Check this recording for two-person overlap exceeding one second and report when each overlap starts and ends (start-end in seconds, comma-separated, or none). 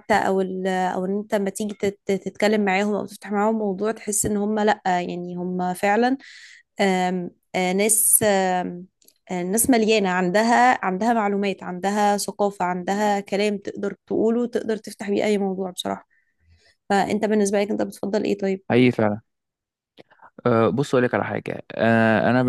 none